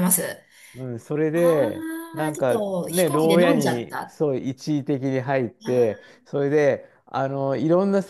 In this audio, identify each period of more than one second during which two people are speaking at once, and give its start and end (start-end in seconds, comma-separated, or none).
2.3-4.2